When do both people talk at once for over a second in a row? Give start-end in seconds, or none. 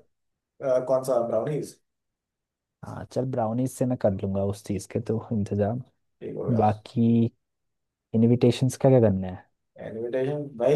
none